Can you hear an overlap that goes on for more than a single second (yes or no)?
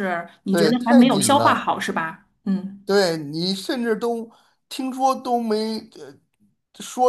yes